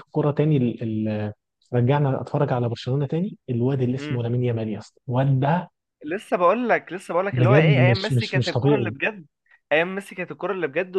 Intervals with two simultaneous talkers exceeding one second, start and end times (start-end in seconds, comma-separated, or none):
7.3-8.9